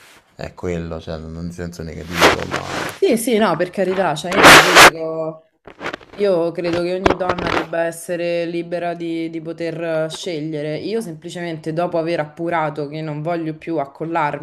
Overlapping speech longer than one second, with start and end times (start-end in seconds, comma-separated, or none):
none